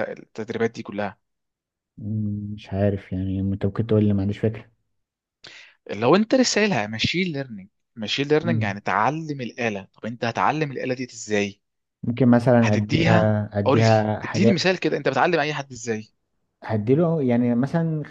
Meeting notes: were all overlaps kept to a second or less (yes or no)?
no